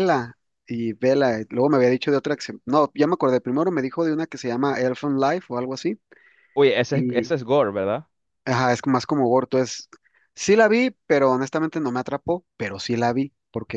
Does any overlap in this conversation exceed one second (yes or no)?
no